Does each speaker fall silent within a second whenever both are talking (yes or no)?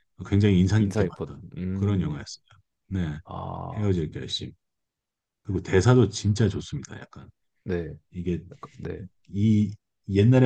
no